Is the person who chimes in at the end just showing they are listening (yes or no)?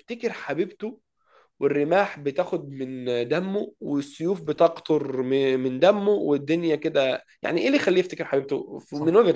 no